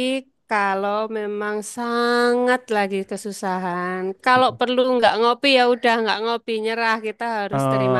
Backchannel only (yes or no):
no